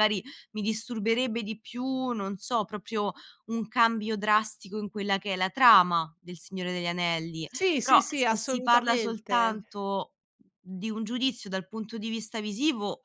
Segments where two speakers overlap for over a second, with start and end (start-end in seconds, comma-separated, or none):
7.5-9.6